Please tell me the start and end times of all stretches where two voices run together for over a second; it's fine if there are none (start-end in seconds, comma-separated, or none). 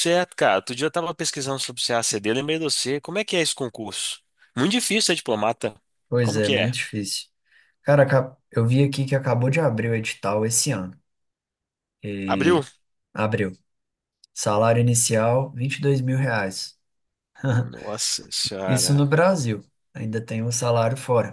none